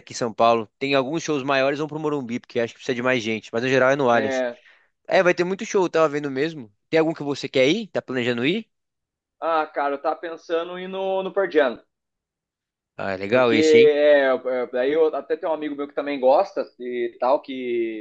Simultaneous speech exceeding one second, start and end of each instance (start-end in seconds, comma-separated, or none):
none